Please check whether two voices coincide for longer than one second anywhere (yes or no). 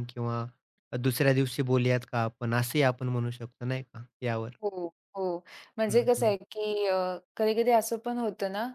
no